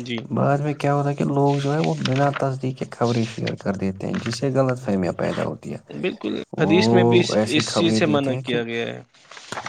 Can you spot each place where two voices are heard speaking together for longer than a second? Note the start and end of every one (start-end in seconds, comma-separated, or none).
6.6-8.6